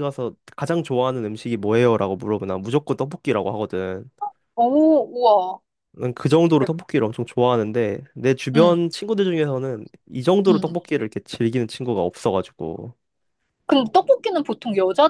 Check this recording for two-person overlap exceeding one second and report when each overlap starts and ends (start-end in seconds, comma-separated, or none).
none